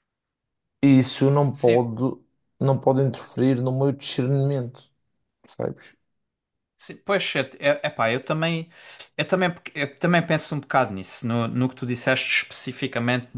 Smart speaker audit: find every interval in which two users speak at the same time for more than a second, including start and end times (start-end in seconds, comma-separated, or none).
none